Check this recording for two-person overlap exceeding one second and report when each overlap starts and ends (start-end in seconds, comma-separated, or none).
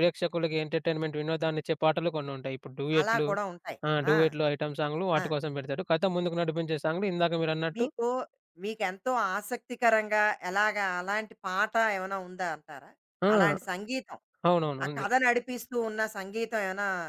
none